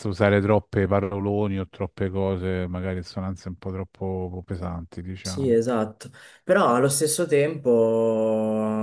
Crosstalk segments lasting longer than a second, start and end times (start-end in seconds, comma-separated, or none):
none